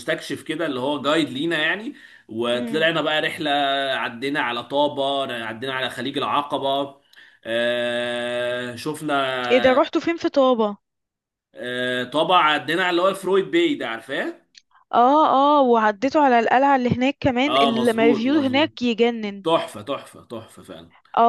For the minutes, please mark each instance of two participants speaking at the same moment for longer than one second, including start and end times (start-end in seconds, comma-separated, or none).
17.4-18.7